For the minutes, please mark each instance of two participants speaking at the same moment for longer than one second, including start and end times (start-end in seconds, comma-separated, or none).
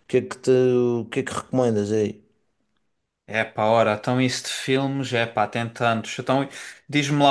none